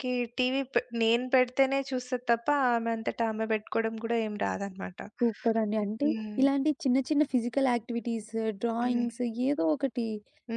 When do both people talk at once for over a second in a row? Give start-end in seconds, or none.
none